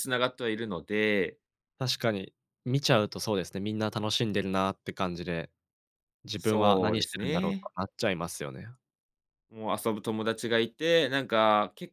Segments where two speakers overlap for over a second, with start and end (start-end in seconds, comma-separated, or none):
6.4-7.7